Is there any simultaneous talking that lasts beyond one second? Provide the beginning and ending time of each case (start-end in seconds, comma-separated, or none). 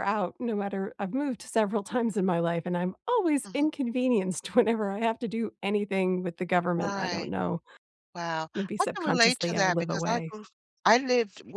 8.5-10.4